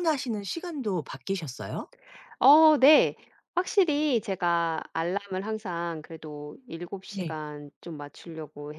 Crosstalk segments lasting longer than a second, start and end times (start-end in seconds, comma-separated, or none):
none